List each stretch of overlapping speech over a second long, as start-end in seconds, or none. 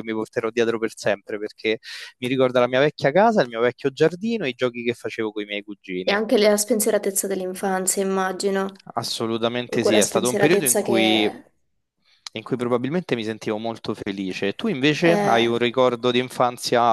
9.6-11.3